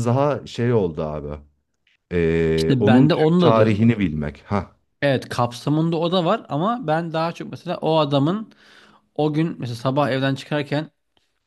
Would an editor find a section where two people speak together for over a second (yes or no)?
yes